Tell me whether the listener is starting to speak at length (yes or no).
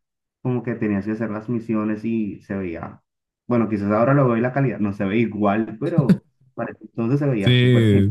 yes